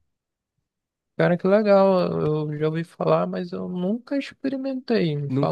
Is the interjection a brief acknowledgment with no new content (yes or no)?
no